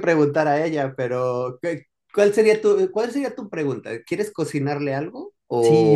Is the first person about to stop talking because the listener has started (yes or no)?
yes